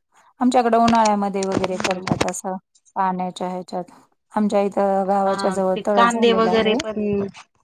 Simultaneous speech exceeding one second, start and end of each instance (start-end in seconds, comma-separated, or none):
5.2-6.8